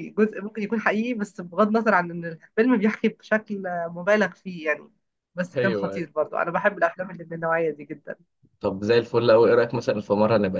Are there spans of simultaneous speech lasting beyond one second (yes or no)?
no